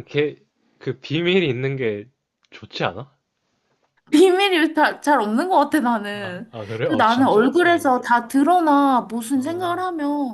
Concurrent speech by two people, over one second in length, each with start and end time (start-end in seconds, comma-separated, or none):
6.1-8.0